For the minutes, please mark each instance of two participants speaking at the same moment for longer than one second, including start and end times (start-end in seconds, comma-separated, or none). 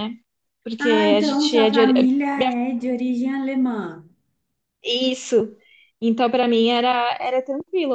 0.8-2.1